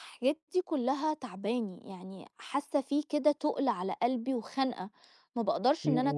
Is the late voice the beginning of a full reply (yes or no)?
yes